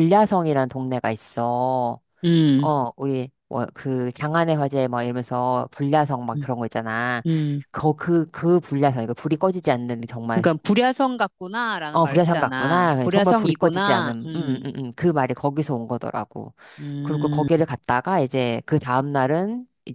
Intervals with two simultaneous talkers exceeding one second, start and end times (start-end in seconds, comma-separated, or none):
11.9-14.6